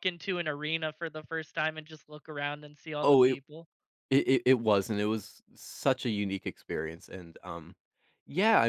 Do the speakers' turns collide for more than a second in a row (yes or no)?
no